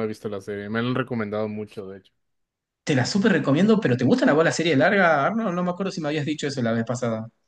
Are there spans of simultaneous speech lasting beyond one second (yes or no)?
no